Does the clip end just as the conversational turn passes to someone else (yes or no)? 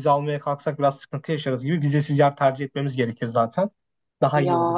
yes